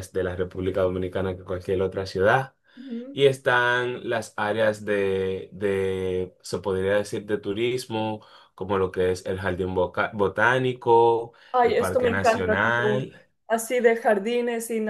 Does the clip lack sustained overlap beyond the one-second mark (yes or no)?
no